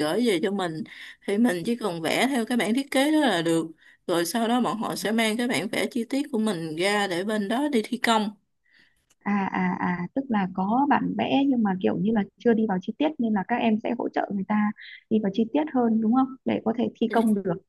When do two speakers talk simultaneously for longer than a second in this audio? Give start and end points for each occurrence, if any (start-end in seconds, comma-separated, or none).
none